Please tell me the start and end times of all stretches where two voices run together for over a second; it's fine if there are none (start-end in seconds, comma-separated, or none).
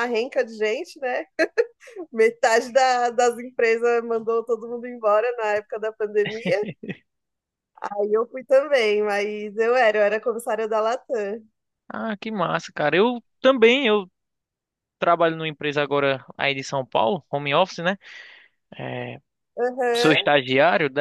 none